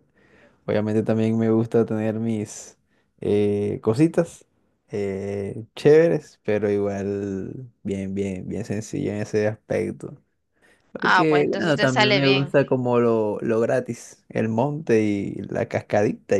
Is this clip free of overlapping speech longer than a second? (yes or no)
no